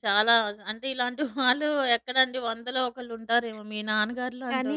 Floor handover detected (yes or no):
yes